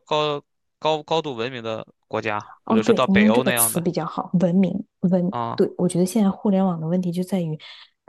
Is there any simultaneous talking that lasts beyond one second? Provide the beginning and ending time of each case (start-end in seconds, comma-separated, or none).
2.6-3.8